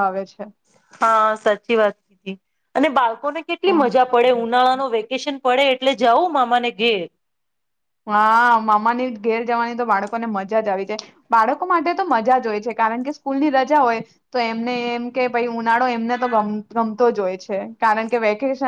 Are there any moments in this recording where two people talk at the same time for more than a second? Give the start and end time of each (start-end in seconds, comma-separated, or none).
none